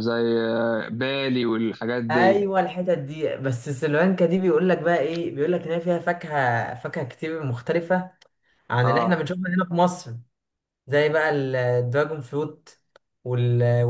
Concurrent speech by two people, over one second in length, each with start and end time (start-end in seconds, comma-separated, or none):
none